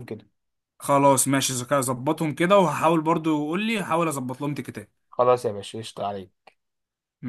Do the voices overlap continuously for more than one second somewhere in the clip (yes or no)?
no